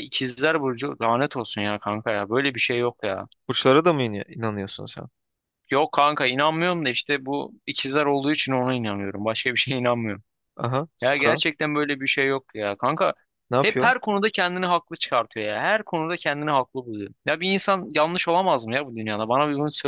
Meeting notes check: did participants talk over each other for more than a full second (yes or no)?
no